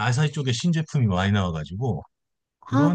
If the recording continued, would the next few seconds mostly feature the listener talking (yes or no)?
no